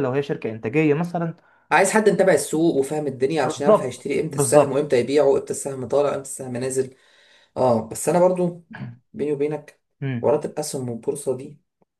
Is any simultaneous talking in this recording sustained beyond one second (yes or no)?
yes